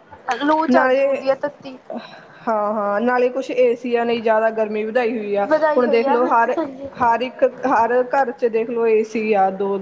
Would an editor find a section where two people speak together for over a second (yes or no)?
yes